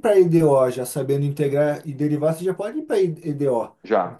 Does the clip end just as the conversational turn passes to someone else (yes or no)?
yes